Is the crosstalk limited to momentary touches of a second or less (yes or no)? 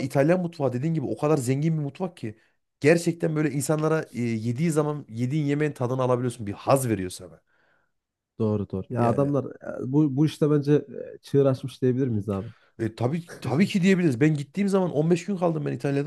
yes